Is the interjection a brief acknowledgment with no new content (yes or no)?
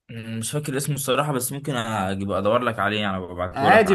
no